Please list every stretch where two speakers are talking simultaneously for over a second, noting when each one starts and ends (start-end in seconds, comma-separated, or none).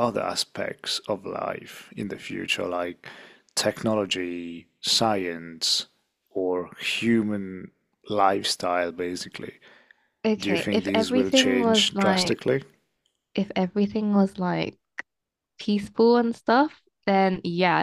10.4-12.4